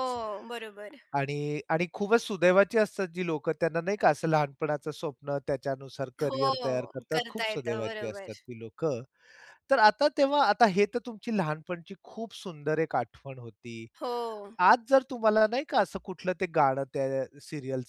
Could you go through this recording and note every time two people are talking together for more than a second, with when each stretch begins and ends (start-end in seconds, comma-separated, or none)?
6.2-8.3